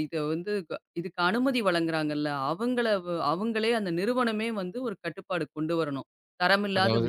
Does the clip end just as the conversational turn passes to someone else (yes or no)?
no